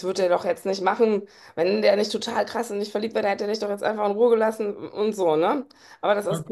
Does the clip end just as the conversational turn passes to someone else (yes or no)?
no